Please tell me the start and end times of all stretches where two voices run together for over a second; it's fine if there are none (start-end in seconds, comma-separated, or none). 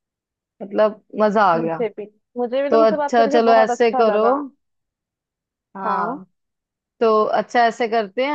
2.7-4.3